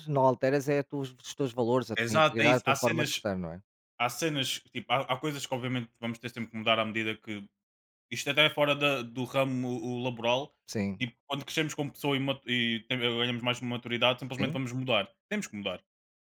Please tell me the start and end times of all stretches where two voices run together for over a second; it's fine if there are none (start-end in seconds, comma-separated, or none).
2.0-3.3